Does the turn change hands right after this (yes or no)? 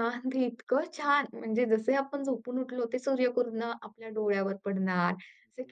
no